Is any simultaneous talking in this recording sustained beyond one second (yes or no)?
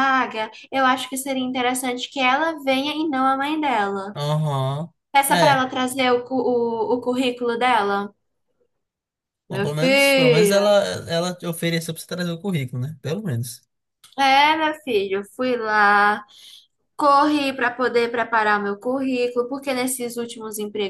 yes